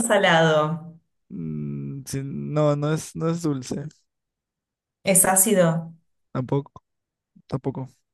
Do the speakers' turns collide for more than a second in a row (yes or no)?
no